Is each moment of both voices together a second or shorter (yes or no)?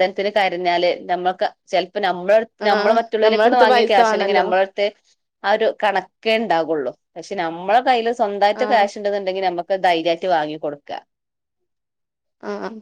no